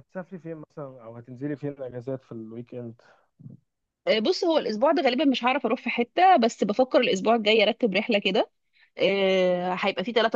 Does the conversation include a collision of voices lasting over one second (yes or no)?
no